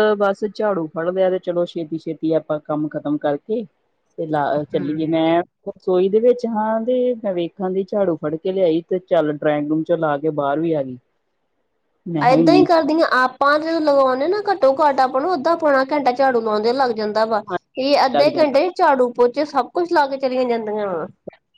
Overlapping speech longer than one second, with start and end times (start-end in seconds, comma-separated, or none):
none